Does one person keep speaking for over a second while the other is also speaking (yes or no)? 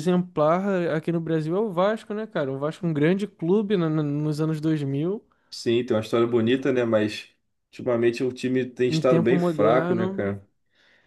yes